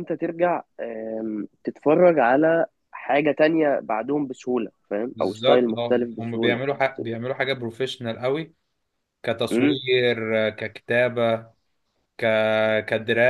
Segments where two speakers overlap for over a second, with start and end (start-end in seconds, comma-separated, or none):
5.1-6.6